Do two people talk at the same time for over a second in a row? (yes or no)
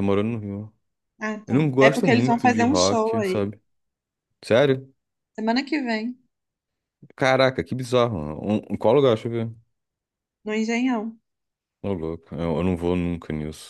yes